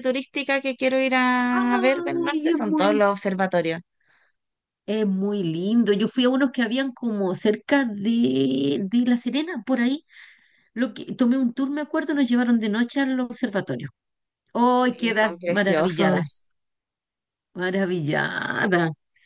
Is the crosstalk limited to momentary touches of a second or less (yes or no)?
no